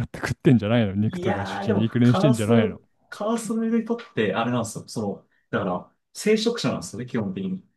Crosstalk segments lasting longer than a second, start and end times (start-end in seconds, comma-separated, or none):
1.1-2.5